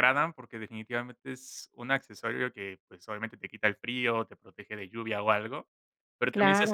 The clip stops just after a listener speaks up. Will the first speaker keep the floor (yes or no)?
yes